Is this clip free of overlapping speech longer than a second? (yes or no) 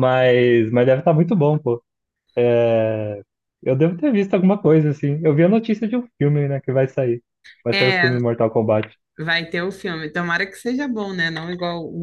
yes